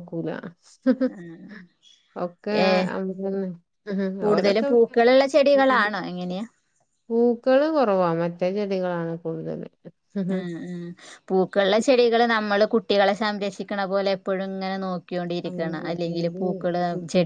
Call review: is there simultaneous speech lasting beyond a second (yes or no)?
yes